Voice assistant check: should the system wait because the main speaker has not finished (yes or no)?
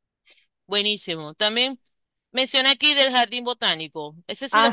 no